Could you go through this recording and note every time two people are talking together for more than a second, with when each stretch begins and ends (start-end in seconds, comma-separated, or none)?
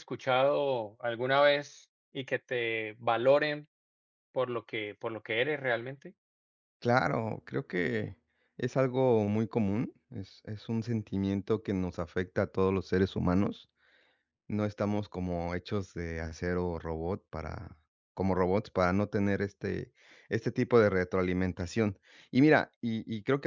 none